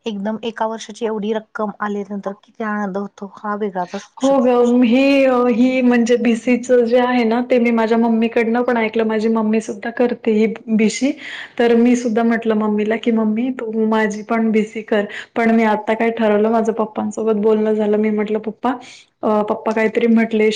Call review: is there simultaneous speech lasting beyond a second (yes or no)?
no